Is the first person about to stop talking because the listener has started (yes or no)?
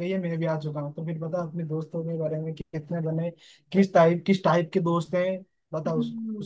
yes